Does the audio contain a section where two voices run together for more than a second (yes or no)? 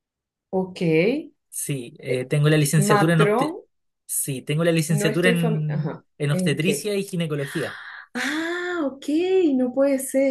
yes